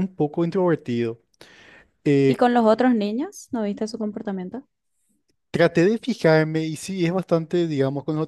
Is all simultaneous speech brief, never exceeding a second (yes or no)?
yes